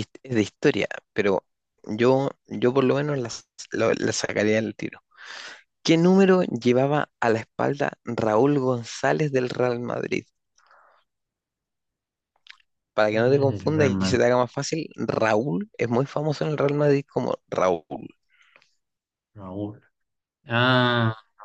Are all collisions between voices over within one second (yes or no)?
no